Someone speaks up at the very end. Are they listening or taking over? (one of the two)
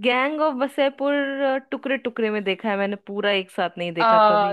taking over